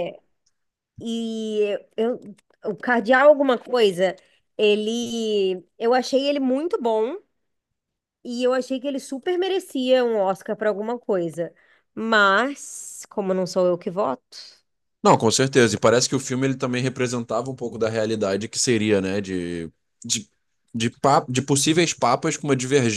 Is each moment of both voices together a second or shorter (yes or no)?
yes